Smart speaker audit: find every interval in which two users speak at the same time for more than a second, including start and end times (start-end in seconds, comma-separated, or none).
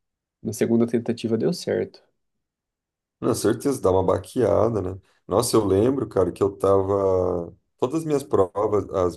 none